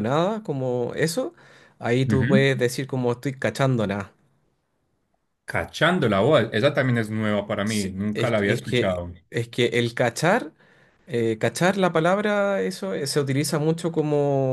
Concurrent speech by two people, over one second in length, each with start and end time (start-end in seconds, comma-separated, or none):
7.6-9.1